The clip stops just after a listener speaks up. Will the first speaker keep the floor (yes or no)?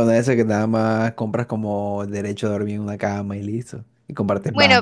no